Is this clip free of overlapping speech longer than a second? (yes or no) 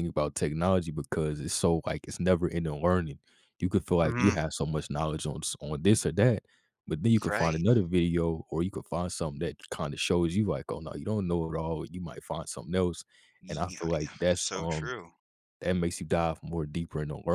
no